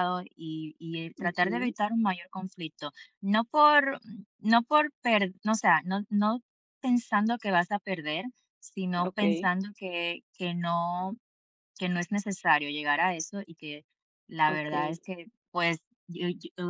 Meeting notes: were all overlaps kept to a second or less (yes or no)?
yes